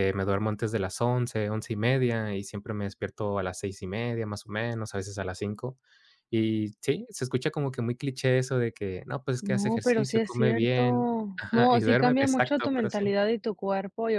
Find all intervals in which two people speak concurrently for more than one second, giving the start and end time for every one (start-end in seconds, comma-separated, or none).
9.4-13.0